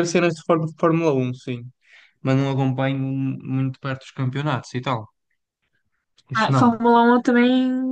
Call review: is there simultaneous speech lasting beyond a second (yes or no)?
no